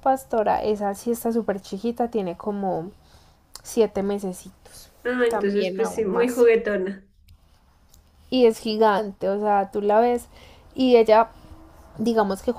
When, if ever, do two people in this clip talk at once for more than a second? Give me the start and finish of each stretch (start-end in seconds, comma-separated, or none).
5.3-6.5